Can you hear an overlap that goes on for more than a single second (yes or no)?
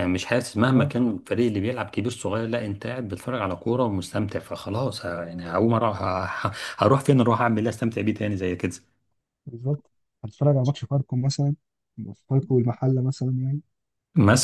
no